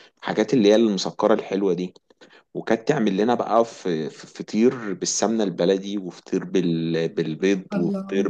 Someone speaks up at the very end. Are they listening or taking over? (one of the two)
listening